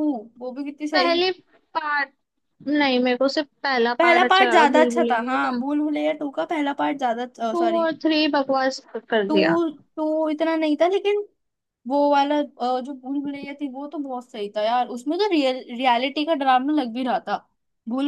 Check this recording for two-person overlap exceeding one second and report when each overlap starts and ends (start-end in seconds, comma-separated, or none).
4.0-5.6